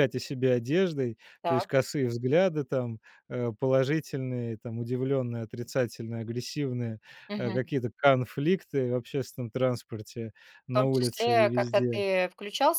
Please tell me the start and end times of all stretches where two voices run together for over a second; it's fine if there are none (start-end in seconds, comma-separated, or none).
10.7-12.0